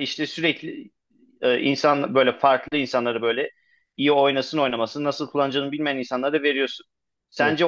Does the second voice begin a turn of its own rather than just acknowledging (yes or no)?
no